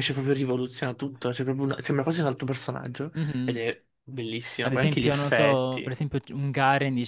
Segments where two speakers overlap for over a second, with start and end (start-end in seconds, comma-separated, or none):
4.6-5.9